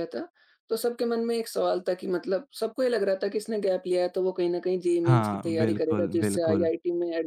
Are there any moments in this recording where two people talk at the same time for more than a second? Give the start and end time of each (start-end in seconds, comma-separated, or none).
5.0-6.7